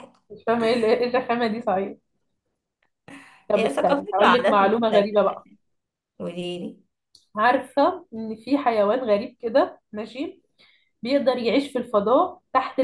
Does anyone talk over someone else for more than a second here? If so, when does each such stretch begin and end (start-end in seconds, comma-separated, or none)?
3.5-5.3